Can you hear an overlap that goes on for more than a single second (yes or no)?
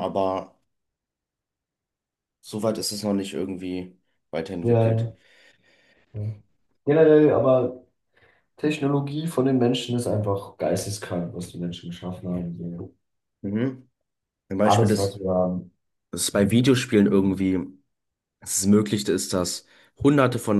no